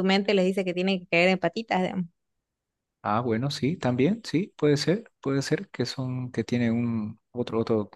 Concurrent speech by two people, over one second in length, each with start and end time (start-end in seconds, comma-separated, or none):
none